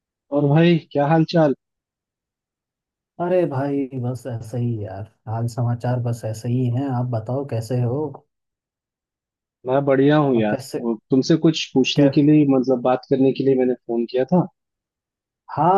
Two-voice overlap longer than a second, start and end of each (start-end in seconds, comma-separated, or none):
none